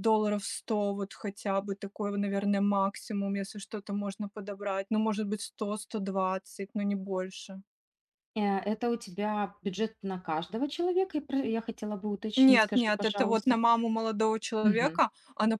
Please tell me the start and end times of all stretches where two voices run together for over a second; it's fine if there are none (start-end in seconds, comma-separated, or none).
12.4-13.6